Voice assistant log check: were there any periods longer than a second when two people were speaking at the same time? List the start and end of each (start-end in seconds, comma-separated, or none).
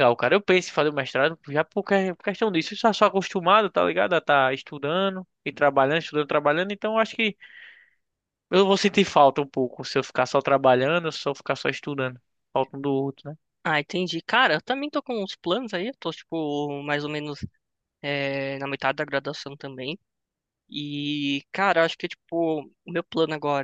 none